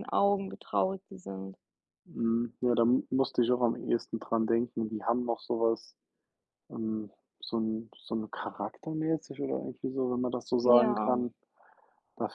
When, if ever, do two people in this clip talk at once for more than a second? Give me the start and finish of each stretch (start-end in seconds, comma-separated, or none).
none